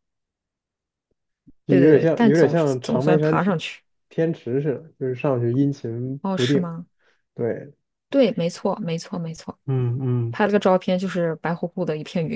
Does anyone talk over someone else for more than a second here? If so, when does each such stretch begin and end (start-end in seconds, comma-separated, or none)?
1.7-3.6